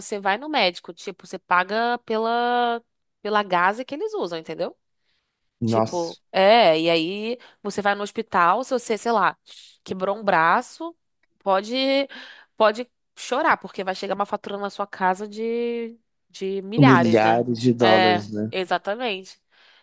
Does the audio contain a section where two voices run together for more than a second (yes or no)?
yes